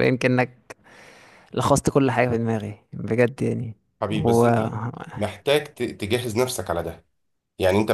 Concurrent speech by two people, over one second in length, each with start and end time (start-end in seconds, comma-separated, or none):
none